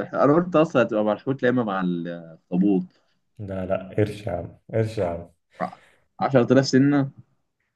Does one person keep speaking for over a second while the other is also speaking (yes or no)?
no